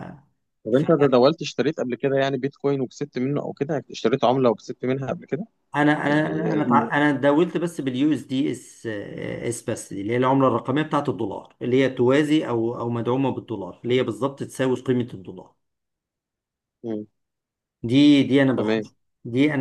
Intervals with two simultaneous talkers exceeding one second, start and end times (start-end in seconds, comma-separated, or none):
none